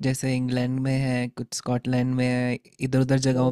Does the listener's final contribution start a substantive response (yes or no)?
no